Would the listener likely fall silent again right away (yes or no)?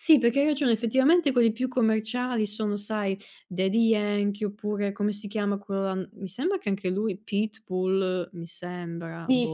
no